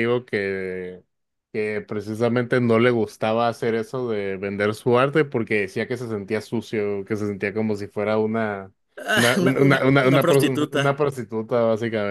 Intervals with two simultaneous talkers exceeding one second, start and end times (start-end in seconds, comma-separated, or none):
9.2-10.9